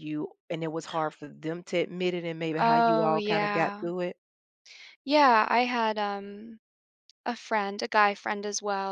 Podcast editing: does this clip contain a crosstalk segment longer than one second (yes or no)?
yes